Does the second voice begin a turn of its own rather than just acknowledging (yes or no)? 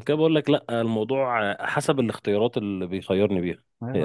yes